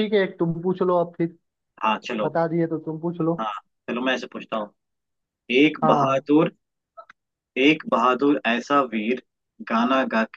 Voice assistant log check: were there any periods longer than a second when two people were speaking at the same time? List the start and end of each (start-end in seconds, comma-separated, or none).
none